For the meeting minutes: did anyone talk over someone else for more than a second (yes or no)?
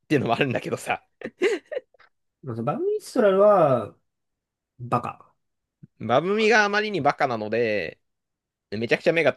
no